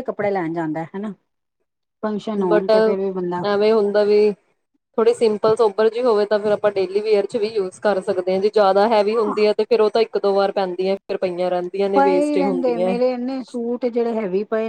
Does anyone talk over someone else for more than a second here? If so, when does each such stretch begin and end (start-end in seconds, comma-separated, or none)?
none